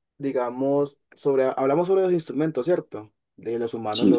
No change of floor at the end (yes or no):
yes